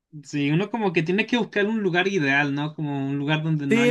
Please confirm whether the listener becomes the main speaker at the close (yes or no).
yes